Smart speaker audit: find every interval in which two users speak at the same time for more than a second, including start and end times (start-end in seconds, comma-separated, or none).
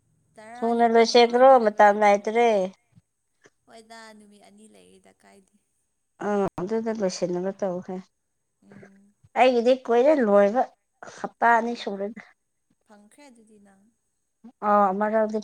0.6-2.2